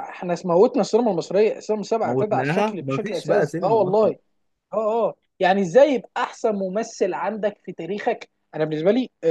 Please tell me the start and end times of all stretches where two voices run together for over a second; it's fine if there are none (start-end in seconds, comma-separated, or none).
2.0-4.1